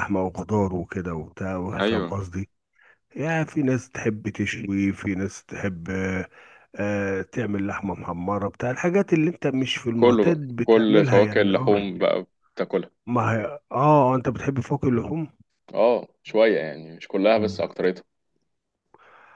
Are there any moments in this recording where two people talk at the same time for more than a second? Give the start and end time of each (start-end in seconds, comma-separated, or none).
9.9-11.9